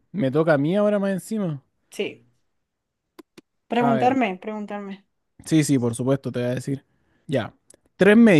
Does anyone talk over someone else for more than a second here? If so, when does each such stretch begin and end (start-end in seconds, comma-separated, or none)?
none